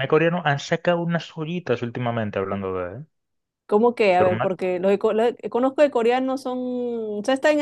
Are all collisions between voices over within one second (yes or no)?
yes